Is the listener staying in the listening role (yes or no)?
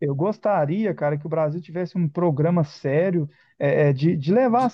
yes